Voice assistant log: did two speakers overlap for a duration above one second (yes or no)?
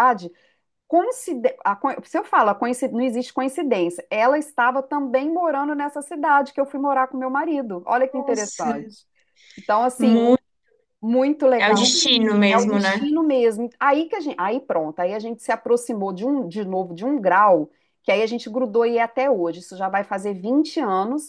no